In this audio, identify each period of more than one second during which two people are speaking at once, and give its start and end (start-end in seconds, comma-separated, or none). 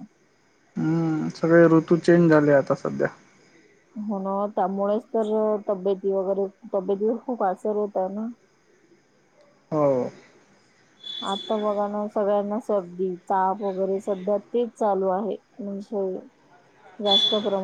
none